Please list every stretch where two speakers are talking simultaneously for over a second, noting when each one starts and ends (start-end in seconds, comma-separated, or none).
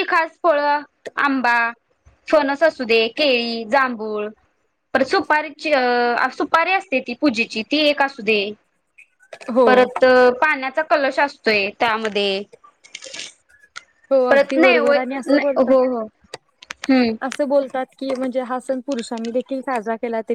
14.3-15.8